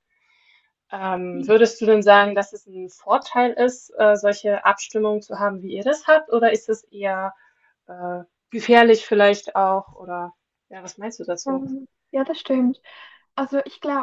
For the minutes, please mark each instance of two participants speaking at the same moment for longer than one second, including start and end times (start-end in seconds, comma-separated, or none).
none